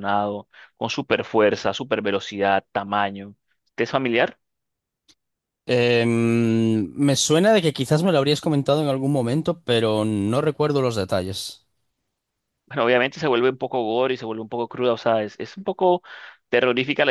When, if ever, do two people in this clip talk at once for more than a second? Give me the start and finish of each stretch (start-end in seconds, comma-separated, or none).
none